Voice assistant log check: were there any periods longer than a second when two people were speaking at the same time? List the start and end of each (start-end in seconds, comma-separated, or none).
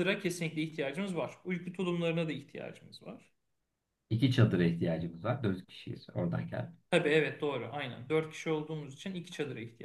none